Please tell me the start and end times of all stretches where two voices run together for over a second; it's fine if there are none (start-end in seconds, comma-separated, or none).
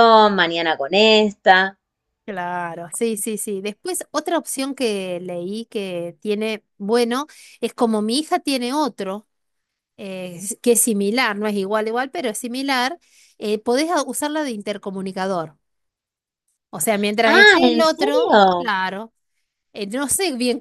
17.2-18.7